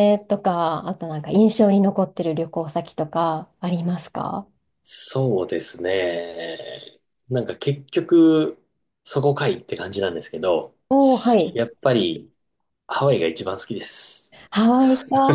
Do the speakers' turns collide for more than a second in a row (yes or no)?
no